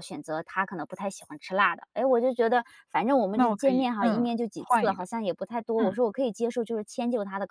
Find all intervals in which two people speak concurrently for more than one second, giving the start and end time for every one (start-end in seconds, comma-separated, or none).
3.3-5.1